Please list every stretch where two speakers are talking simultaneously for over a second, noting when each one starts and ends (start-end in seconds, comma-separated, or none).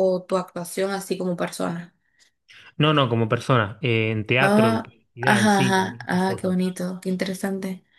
4.4-6.5